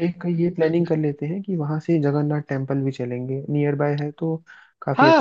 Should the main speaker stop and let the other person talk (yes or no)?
yes